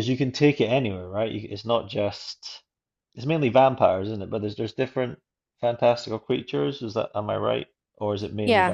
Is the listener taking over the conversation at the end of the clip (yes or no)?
yes